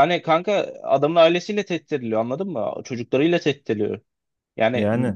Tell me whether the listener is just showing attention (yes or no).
yes